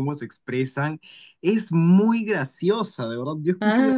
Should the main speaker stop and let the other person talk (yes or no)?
no